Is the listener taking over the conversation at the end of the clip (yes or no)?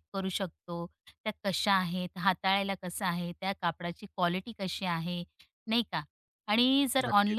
no